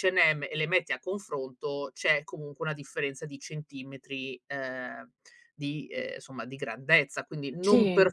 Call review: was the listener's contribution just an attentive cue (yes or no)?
yes